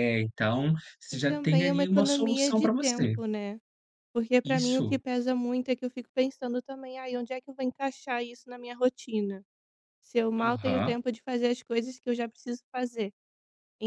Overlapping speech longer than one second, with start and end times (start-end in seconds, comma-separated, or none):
1.1-3.1